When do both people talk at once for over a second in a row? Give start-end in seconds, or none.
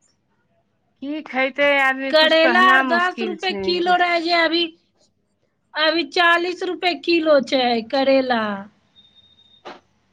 2.1-3.9